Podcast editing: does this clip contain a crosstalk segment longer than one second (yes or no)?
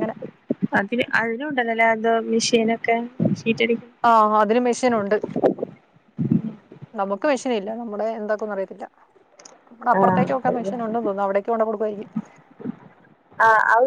no